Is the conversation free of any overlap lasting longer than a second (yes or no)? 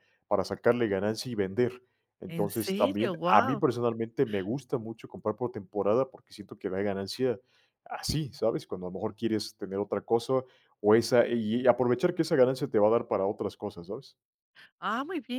no